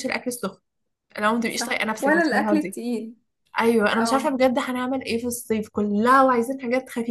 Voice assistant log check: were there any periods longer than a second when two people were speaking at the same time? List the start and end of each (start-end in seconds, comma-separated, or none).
1.5-2.8